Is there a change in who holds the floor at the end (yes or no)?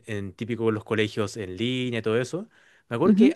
no